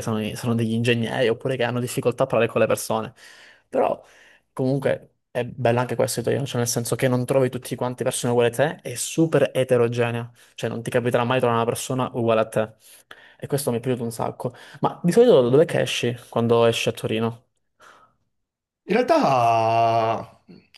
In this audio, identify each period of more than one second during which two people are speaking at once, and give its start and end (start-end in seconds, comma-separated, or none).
none